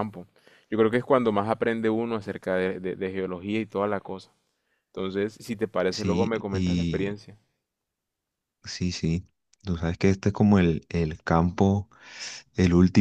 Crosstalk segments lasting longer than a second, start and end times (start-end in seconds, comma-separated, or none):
5.9-7.2